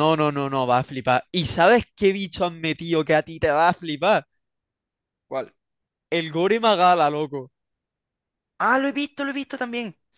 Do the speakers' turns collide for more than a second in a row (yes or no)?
no